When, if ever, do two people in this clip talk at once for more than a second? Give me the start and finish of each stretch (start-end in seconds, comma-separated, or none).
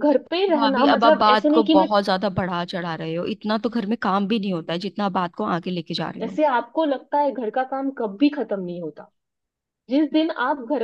0.6-1.9